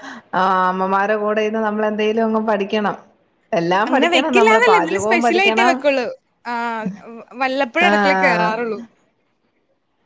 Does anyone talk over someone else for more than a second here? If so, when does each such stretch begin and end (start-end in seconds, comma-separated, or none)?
3.9-5.7